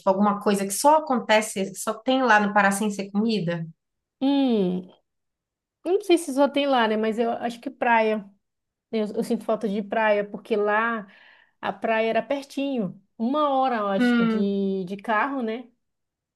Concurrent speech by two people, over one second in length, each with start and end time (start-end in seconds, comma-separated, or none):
none